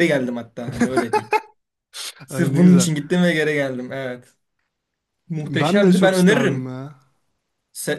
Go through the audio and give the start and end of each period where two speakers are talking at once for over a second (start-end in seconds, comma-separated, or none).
5.4-6.8